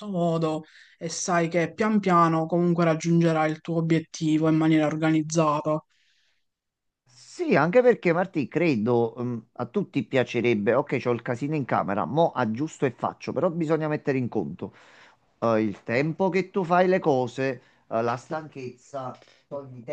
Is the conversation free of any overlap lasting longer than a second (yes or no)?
yes